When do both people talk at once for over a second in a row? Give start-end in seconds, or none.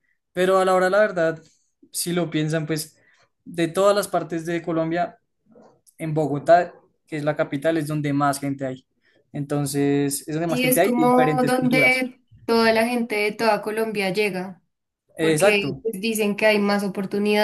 10.5-12.1